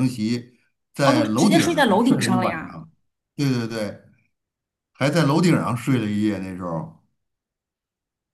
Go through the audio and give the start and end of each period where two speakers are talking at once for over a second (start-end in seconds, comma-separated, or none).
1.0-2.8